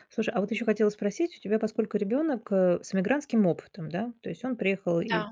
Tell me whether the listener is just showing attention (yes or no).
yes